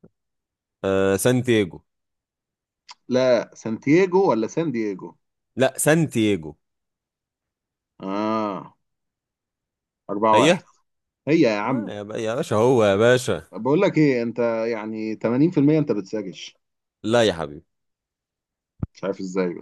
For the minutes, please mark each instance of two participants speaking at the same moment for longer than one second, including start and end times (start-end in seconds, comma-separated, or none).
none